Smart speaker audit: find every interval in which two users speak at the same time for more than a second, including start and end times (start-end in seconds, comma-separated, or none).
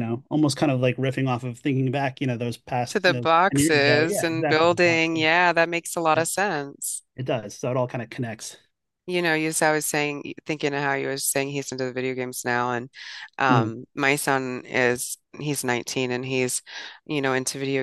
2.9-5.1